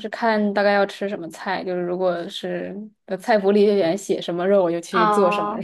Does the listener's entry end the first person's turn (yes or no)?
yes